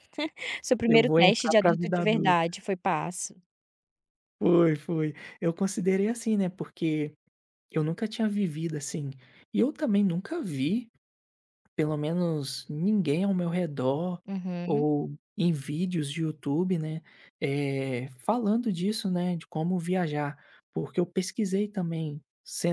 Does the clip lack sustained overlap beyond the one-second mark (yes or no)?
no